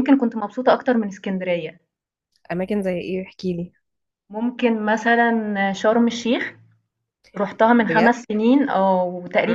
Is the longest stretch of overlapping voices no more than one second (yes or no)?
yes